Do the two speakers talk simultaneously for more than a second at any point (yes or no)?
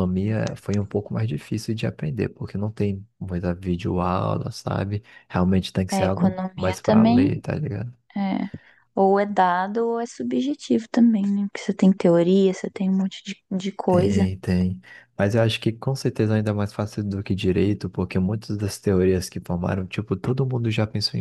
yes